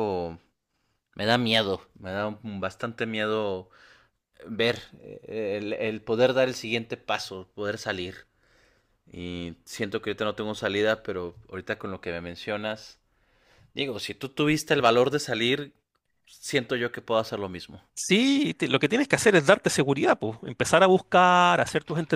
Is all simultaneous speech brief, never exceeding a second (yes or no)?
yes